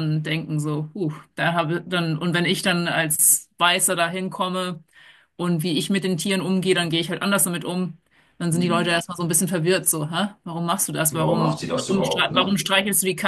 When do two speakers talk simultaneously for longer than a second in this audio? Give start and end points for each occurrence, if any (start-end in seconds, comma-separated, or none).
11.1-12.6